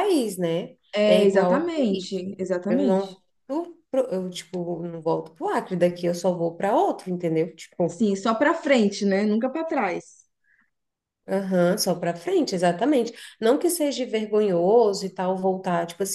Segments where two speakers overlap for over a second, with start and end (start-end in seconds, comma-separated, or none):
1.0-3.2